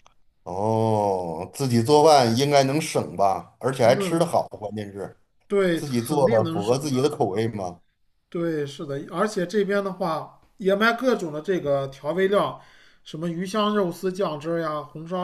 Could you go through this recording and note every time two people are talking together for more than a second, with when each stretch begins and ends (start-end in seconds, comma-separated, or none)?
5.8-7.2